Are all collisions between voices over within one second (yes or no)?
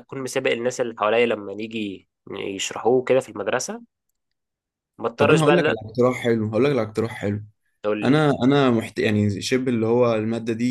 yes